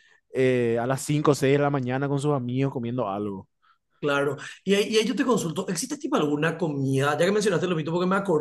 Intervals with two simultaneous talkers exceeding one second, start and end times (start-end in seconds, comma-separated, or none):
none